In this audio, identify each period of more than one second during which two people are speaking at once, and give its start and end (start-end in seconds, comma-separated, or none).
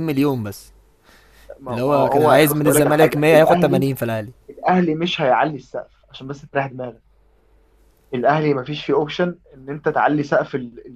1.7-3.8